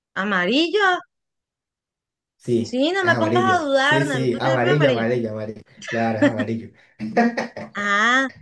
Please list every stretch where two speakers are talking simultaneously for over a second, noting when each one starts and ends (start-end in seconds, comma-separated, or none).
2.7-5.0